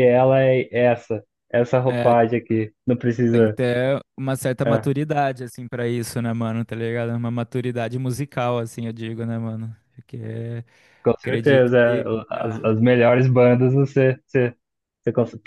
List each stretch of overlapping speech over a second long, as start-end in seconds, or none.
11.2-12.7